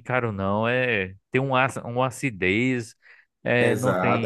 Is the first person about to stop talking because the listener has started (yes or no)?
yes